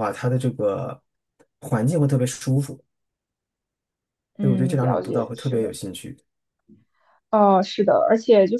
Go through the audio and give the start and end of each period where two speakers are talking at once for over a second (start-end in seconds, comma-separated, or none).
4.4-5.7